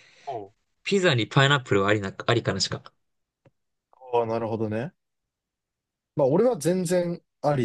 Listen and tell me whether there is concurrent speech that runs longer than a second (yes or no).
no